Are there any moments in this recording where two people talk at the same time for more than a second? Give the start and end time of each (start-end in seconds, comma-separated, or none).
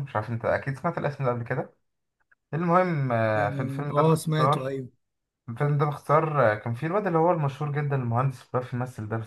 3.4-4.7